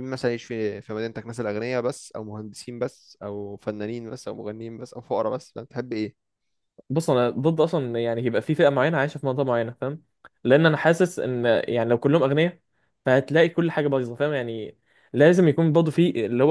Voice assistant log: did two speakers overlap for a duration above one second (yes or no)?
no